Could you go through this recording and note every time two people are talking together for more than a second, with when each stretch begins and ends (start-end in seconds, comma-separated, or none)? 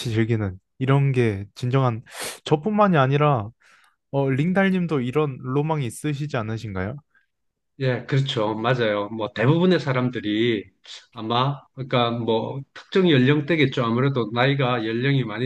none